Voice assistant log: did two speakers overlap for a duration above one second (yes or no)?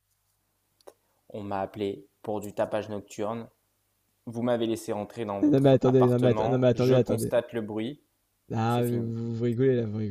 yes